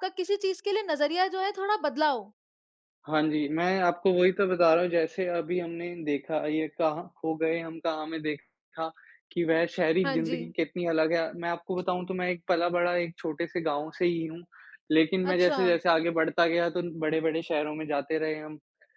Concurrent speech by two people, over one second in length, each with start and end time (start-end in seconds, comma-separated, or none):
none